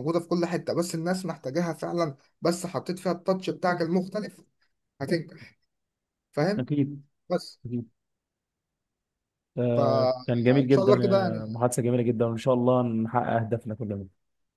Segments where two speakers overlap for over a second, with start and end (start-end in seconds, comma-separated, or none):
9.7-11.4